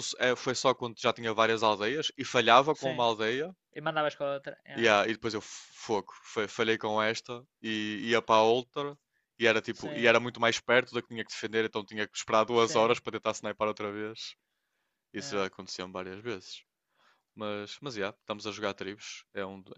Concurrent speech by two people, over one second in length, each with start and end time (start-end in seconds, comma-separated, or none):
none